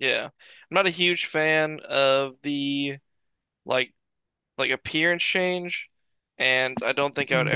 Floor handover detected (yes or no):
no